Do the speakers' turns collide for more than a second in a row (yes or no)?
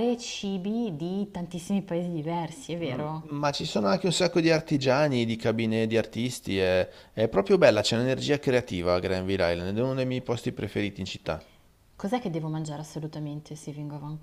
no